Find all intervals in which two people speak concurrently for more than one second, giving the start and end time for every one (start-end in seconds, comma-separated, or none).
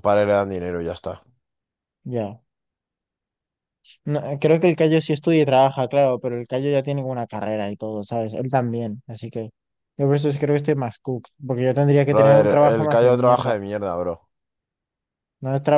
12.1-13.5